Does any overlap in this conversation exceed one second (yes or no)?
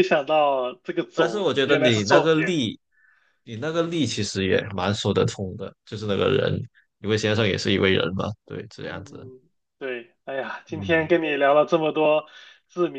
yes